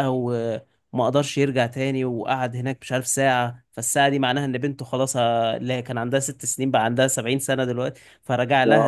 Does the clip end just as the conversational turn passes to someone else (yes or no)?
no